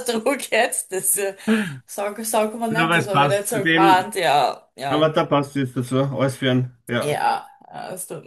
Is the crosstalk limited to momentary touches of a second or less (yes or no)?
no